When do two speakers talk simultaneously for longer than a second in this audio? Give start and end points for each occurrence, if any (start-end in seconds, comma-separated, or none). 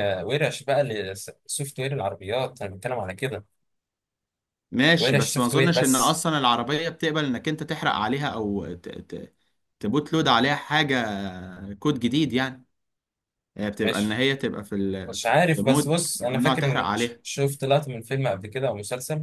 5.0-6.2, 15.1-17.2